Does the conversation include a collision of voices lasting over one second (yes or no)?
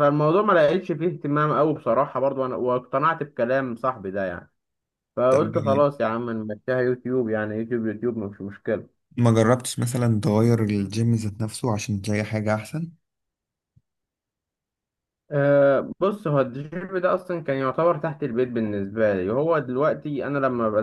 no